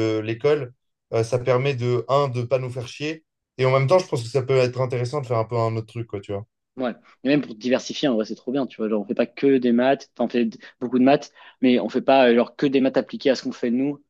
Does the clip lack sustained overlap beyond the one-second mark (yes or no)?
yes